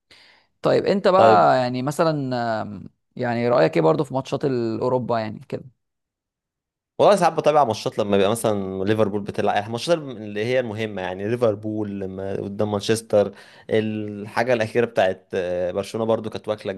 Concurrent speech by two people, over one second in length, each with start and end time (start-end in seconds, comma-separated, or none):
none